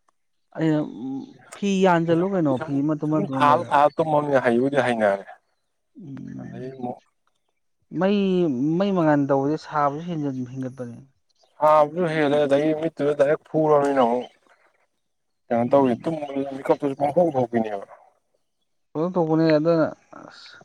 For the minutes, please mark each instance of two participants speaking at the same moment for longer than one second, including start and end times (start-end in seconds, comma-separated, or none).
2.0-3.7